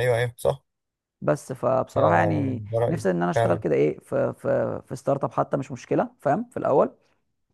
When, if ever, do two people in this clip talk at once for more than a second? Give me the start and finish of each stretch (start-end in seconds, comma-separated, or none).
2.0-3.6